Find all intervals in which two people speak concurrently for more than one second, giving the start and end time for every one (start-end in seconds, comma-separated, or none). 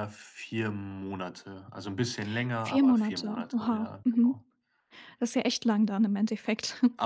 2.5-4.4